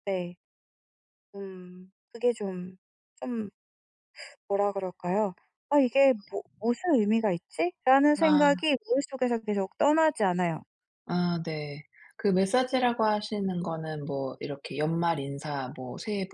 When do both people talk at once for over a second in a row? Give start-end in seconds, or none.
none